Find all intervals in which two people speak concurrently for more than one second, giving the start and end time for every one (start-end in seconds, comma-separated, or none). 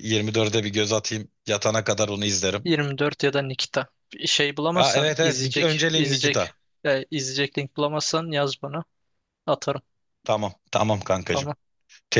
4.7-6.5